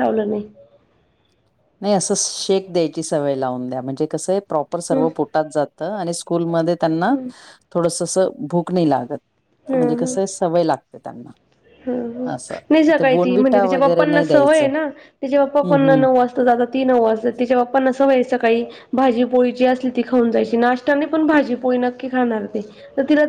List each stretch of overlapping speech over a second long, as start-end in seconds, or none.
13.0-14.7